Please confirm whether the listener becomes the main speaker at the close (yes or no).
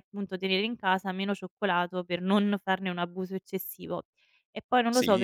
yes